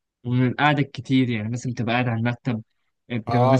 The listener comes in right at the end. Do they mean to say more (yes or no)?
yes